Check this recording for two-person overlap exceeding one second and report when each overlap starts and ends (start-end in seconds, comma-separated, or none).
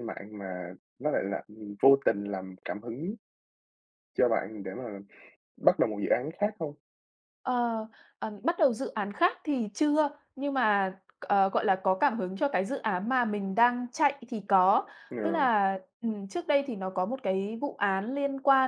none